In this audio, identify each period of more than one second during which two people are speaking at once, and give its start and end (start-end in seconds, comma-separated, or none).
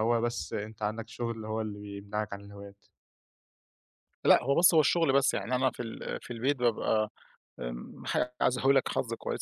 none